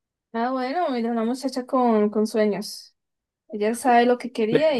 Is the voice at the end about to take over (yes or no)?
yes